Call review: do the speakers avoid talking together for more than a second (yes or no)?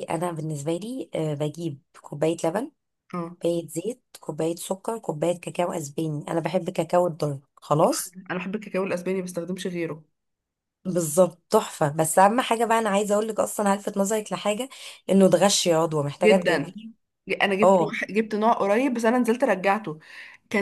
yes